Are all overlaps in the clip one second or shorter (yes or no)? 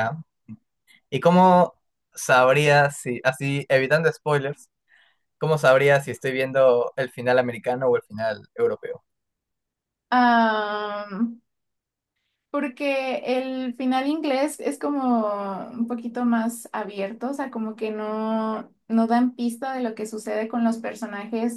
yes